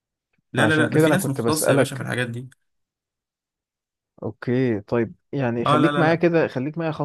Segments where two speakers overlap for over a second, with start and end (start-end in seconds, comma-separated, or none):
0.6-2.1